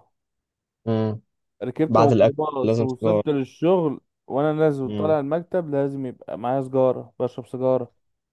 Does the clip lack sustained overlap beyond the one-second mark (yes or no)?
no